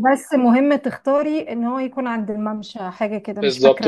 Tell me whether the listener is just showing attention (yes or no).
no